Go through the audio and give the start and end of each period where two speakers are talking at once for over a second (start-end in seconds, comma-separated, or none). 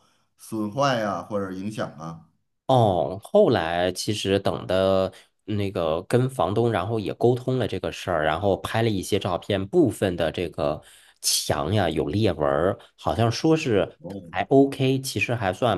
none